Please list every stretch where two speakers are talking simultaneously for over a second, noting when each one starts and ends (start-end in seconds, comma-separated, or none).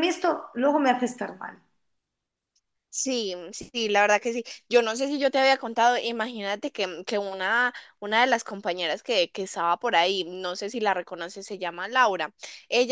none